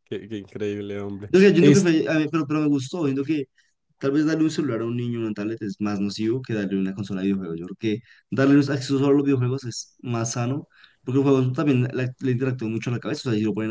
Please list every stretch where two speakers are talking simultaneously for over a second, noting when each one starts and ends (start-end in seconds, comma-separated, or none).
none